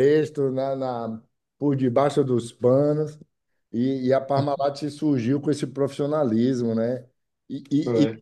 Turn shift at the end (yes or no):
no